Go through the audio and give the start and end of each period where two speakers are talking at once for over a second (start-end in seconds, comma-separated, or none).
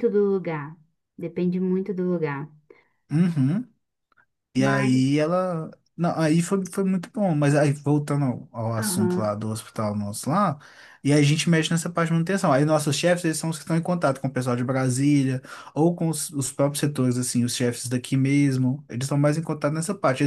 none